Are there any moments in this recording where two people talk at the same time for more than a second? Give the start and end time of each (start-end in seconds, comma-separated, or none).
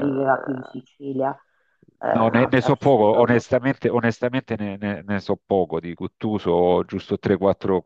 2.1-3.3